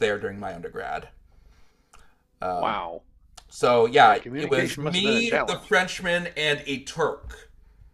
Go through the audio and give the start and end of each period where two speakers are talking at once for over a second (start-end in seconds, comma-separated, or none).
4.0-5.7